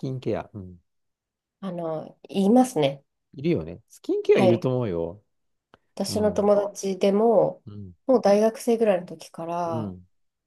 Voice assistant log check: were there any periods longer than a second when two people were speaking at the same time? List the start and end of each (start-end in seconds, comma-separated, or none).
none